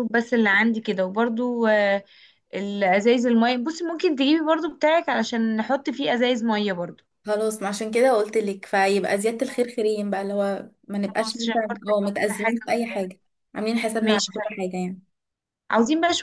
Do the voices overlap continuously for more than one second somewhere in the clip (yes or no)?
yes